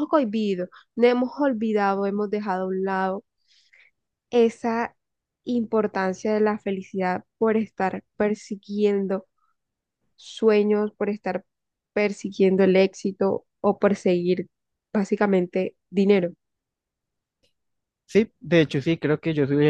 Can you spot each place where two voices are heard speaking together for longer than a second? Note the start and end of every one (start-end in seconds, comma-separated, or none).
none